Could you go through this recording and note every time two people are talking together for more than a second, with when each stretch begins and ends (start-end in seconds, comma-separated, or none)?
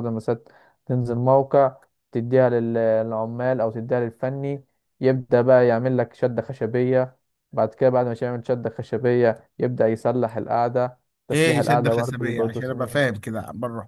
11.3-13.0